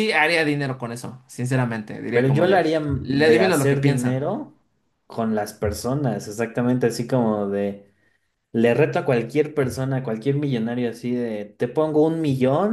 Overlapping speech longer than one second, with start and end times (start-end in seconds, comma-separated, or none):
2.1-4.2